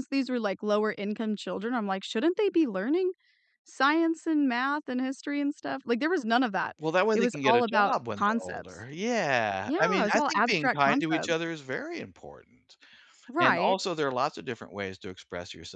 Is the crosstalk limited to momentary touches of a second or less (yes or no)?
no